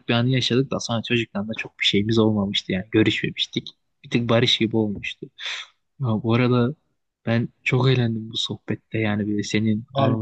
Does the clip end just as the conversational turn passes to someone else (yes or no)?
no